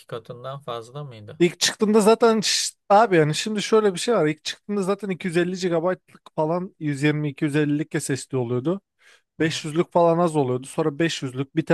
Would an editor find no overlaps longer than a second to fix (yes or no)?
yes